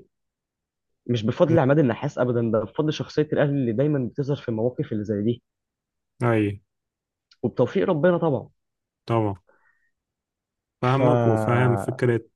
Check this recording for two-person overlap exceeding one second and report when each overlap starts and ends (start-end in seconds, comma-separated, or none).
none